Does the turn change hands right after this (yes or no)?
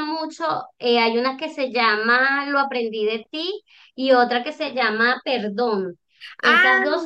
no